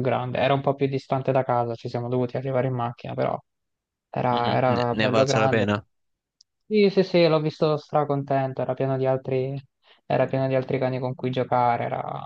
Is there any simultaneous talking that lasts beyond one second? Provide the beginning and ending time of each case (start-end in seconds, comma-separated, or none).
4.3-5.7